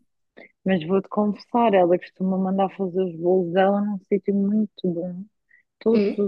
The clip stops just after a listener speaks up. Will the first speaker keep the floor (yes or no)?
yes